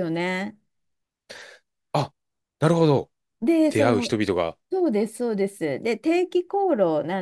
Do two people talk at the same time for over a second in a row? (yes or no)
no